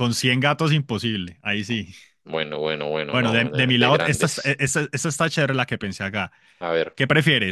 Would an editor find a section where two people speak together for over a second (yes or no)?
yes